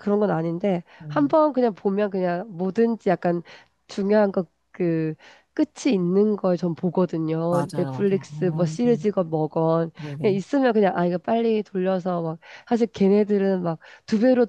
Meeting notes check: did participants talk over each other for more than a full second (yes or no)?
yes